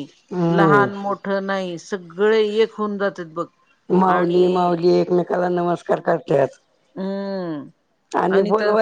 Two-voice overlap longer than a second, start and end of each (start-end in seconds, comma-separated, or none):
none